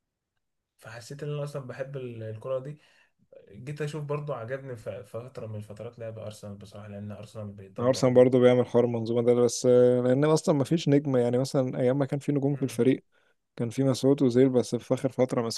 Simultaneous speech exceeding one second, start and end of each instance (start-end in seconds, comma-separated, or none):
none